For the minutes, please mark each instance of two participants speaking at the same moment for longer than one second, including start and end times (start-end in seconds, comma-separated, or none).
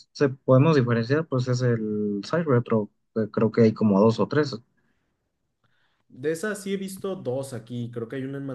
none